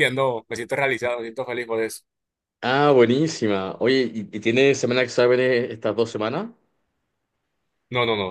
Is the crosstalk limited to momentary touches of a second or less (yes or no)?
yes